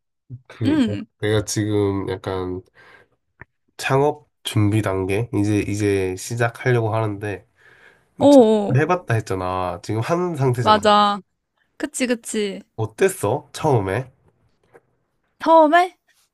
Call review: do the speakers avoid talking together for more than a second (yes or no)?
yes